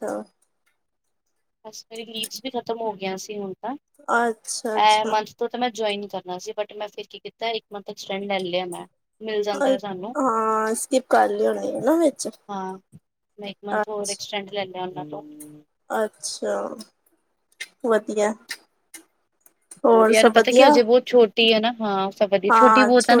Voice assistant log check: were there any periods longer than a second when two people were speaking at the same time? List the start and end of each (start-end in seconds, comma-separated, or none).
none